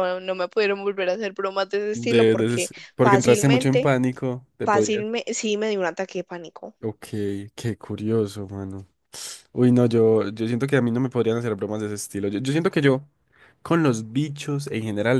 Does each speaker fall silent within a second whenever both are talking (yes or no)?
no